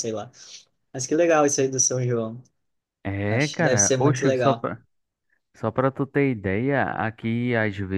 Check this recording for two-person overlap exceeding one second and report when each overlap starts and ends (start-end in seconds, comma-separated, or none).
3.3-4.7